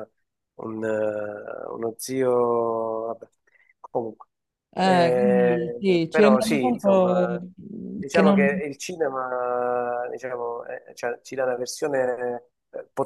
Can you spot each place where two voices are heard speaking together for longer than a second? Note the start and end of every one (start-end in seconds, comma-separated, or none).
4.8-7.4